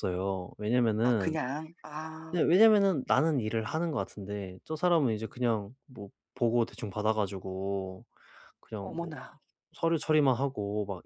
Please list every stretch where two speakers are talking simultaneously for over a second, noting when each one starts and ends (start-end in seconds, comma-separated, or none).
none